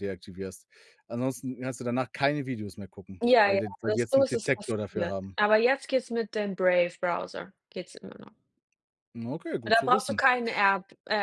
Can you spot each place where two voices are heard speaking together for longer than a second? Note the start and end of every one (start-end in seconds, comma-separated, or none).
3.2-5.4